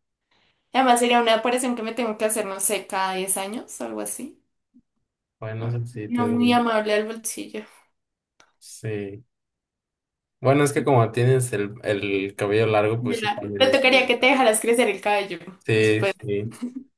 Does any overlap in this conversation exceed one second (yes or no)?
yes